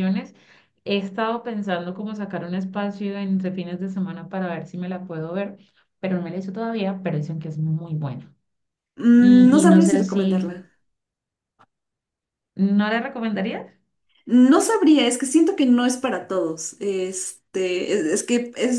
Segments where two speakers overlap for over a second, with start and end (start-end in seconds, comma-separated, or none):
9.2-10.5